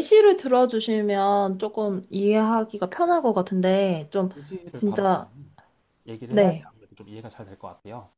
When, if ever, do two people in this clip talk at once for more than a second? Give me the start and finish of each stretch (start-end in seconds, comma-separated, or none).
none